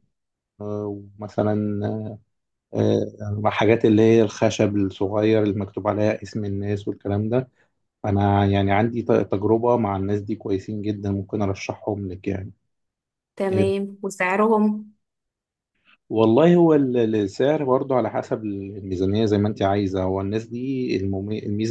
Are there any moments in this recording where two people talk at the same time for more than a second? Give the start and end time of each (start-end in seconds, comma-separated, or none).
none